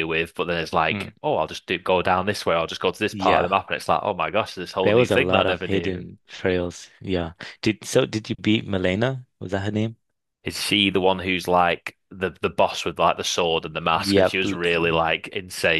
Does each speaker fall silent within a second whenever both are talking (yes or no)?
no